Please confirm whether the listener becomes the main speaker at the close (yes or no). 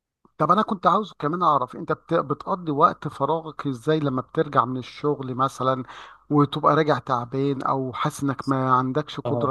no